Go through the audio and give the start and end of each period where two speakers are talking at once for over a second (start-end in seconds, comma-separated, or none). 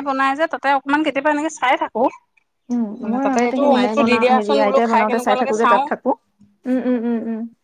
3.0-5.8